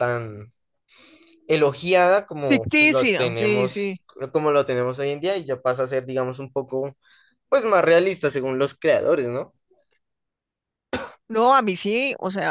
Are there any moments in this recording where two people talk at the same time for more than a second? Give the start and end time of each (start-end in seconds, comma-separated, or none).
2.5-3.9